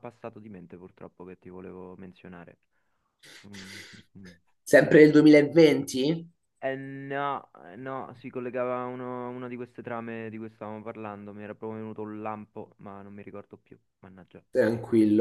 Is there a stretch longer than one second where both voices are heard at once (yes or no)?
no